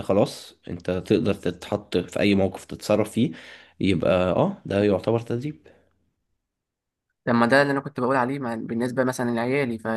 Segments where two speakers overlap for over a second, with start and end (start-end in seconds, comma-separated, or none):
none